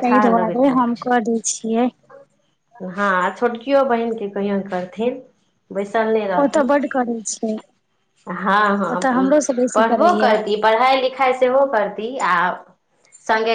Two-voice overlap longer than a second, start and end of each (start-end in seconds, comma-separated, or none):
none